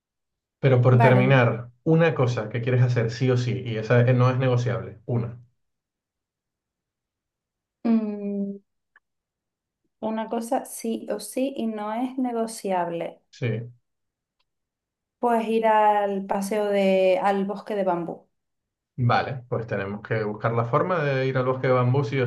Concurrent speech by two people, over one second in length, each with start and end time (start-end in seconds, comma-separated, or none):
none